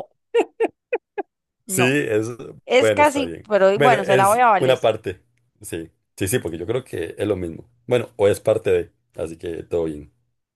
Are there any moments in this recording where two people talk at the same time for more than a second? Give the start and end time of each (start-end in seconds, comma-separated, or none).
2.8-4.9